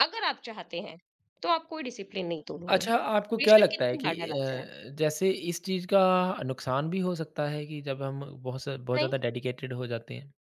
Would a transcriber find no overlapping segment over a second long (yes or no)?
no